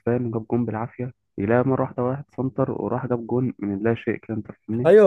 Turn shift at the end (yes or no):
yes